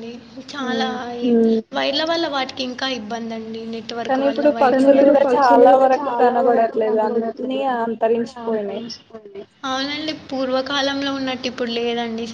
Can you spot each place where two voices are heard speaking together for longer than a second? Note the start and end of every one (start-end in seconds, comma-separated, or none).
4.3-7.9